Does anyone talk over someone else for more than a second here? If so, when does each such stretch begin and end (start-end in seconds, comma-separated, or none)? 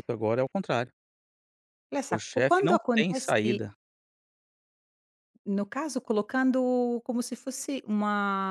2.1-3.6